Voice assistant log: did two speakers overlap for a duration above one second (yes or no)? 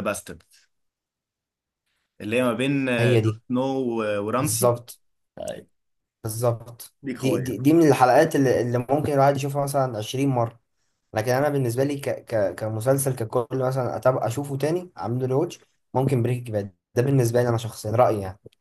no